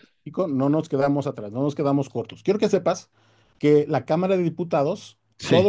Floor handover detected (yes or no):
no